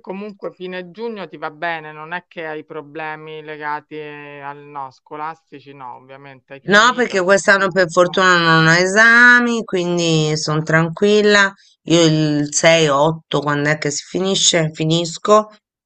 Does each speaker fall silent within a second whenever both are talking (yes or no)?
no